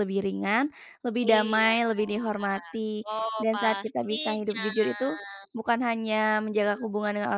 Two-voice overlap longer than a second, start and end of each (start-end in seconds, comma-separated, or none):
3.1-4.7